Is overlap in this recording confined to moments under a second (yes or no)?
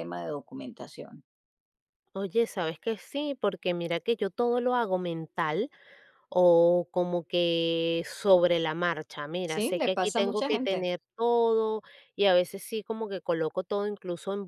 no